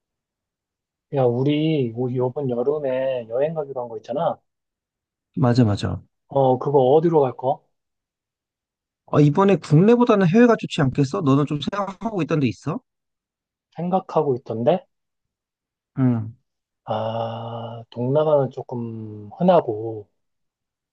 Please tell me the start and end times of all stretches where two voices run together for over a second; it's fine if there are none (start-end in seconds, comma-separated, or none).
none